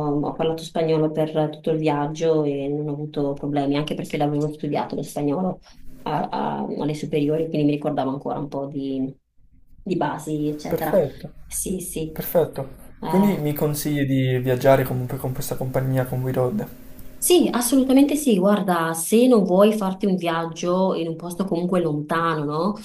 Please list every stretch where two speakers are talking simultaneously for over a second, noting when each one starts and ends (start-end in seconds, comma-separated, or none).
none